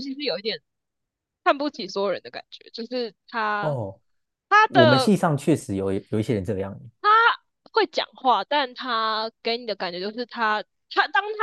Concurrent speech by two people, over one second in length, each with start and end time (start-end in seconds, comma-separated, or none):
none